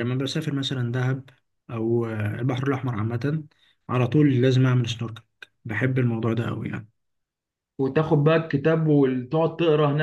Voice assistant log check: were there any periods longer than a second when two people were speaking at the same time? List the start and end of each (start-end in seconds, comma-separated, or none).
none